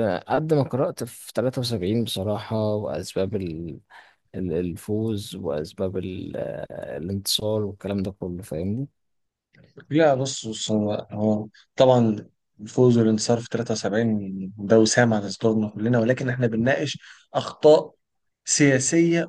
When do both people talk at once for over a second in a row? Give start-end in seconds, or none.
none